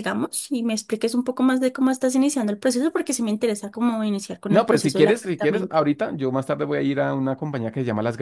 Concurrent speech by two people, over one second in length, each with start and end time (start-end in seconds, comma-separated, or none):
4.5-5.8